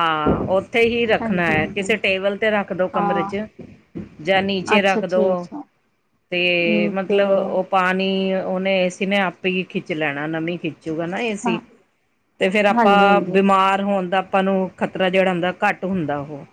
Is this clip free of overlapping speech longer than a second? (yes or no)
yes